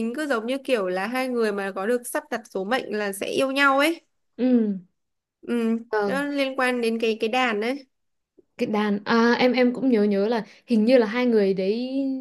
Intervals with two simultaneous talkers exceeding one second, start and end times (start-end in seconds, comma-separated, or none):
none